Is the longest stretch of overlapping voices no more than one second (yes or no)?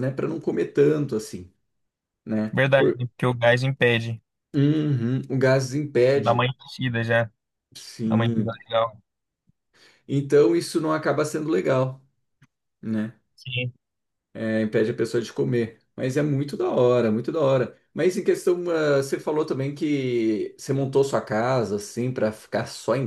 yes